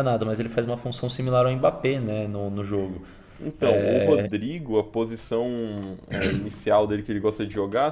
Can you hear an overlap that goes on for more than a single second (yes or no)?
no